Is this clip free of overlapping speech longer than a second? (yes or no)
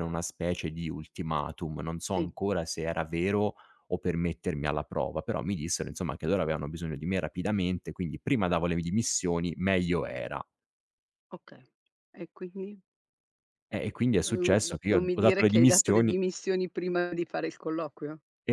no